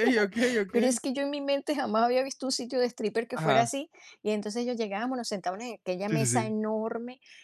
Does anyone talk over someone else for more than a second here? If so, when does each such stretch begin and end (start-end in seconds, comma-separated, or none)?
none